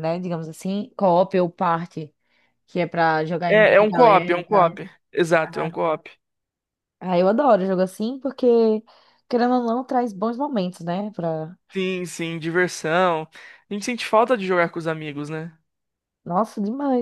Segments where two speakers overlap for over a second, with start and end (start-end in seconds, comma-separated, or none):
3.5-4.8